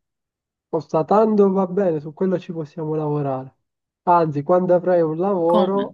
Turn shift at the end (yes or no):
no